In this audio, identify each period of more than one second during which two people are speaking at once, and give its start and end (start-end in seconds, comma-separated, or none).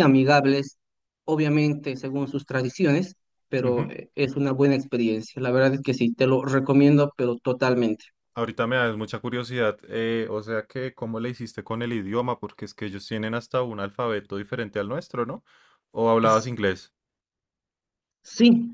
none